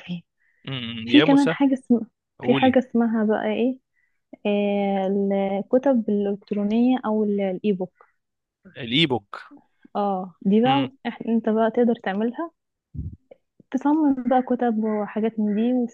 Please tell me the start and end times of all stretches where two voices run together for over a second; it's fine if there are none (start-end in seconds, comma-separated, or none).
none